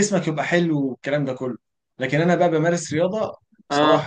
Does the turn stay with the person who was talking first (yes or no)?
yes